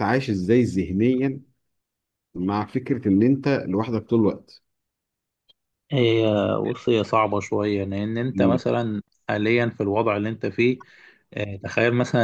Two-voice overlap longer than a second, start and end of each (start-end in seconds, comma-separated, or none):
none